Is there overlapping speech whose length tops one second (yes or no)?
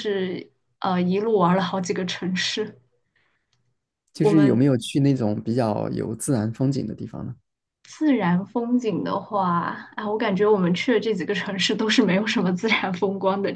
no